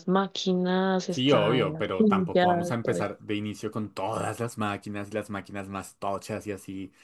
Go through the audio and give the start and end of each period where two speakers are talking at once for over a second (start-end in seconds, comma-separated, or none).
1.1-3.1